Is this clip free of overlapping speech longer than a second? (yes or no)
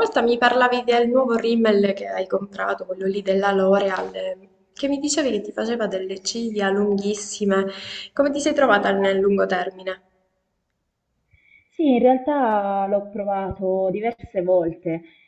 yes